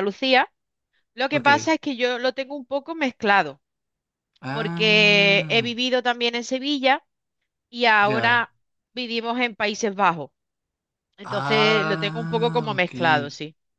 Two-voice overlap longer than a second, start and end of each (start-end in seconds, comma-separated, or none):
4.5-5.7, 11.2-12.9